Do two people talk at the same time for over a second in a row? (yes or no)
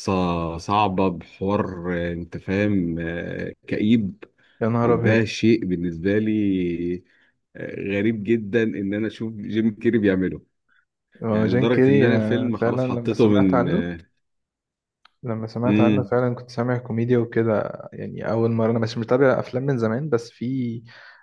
yes